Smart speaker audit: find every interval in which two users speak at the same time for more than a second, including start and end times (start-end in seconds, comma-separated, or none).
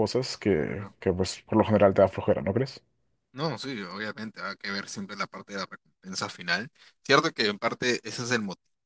none